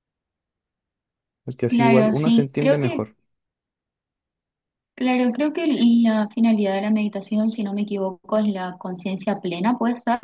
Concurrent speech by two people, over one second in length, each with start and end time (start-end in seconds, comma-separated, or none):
1.7-3.1